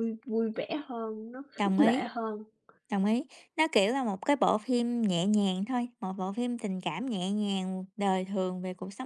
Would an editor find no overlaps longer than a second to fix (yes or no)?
yes